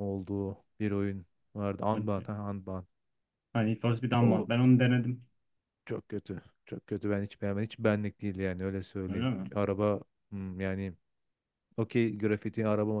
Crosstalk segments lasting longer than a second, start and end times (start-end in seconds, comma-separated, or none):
none